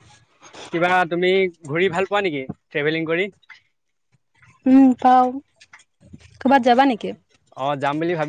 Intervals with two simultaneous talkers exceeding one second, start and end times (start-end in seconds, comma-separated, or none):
none